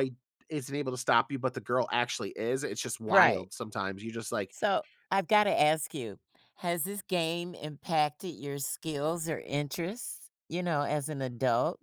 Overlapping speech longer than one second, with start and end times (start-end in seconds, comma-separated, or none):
none